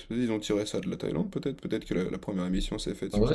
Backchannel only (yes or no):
no